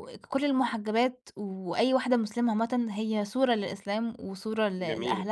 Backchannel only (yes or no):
yes